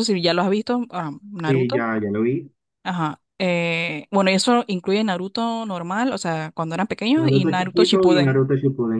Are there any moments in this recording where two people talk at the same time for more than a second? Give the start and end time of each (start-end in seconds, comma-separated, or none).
7.2-8.5